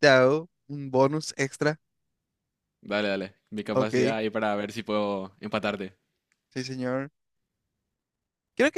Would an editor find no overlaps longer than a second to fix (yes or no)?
yes